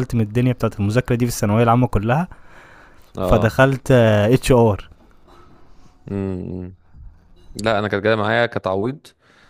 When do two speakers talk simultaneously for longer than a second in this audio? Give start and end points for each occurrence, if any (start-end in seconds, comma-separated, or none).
none